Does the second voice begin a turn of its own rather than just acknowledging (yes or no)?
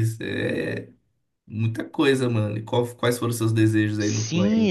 yes